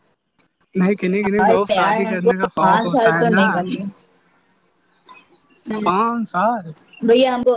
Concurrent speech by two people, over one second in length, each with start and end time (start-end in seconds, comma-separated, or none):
1.4-3.4